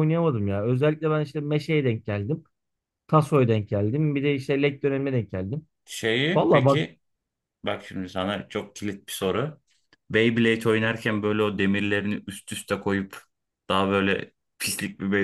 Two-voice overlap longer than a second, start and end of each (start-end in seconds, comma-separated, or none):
none